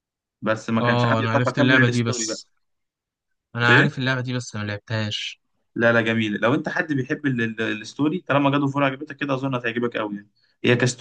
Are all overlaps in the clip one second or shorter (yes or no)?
no